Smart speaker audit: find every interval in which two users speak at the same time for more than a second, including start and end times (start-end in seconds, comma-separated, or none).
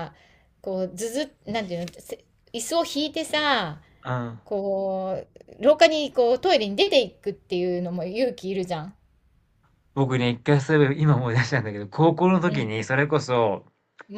none